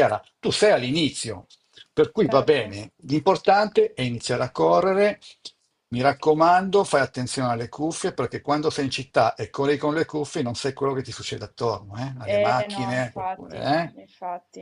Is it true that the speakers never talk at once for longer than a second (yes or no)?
no